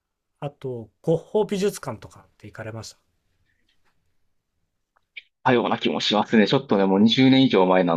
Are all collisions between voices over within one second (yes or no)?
yes